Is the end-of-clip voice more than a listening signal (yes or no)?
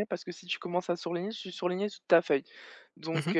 no